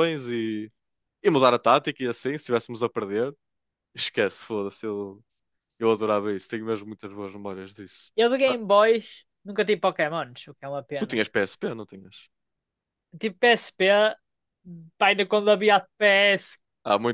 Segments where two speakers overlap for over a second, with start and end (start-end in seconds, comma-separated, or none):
none